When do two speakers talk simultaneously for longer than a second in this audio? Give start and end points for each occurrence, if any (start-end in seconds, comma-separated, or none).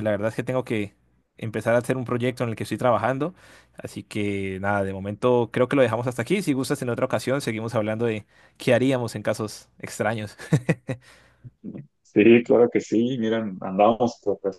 none